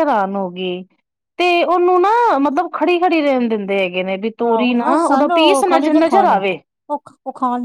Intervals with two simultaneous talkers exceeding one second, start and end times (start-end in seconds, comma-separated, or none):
4.4-6.4